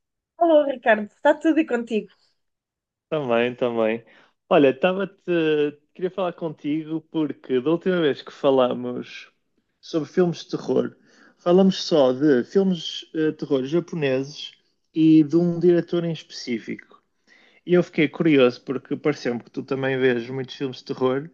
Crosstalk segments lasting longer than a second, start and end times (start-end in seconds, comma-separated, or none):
none